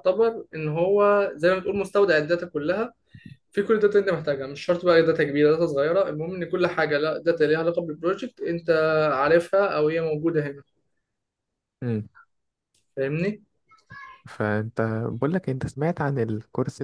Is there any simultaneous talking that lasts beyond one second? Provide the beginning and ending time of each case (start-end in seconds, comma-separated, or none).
none